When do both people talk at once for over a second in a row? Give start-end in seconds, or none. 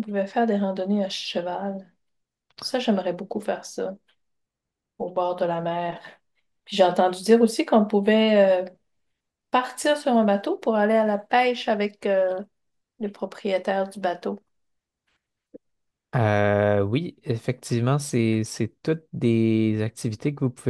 none